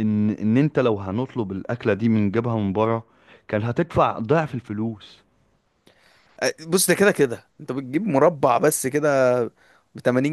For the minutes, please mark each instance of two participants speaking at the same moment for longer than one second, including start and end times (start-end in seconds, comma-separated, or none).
none